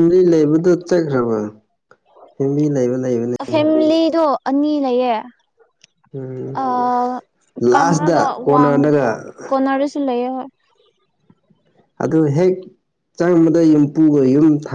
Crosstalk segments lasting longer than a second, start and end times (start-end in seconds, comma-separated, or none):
7.7-9.1